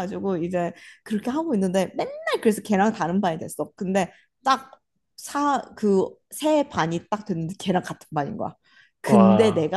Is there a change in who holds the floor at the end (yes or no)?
no